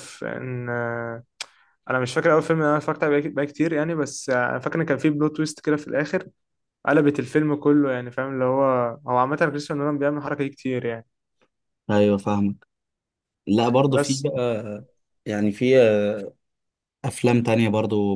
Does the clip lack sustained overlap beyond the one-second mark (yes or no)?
yes